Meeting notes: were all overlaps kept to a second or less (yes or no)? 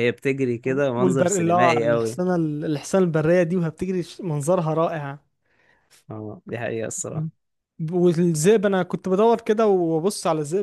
no